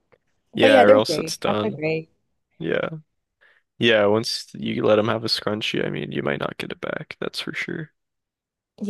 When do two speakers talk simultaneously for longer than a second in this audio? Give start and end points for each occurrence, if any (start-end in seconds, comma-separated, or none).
0.5-1.8